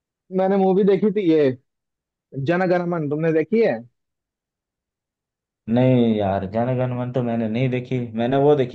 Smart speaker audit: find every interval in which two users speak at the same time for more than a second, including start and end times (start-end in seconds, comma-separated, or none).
none